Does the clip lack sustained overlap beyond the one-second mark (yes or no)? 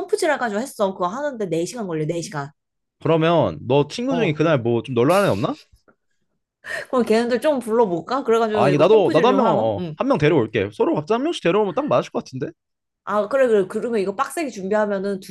no